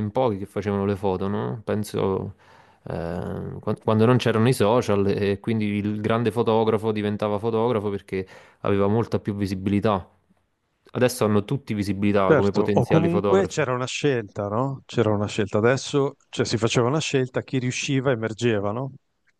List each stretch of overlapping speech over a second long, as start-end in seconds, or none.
12.2-13.6